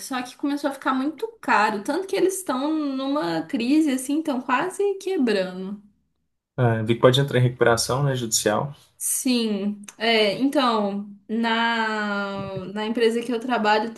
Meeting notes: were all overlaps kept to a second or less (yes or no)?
yes